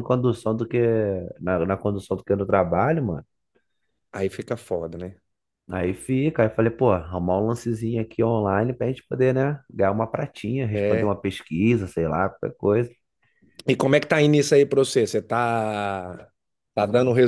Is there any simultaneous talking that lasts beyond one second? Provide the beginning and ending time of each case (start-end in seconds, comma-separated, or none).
none